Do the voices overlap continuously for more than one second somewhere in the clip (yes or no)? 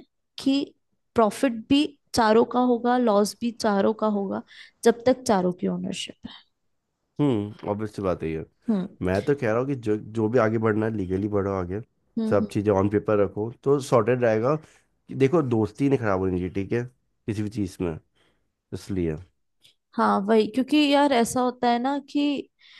no